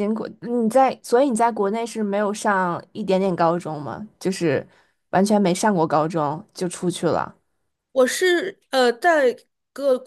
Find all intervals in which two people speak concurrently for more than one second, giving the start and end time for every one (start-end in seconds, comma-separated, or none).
none